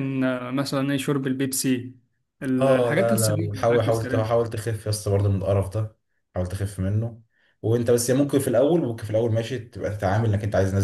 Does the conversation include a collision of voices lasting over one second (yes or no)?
yes